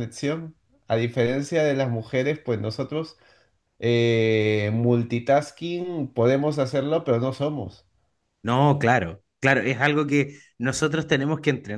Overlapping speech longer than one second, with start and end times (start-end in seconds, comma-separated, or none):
none